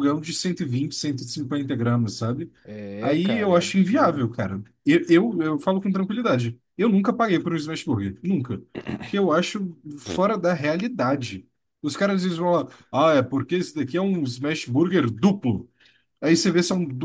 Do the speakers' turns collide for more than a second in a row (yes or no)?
yes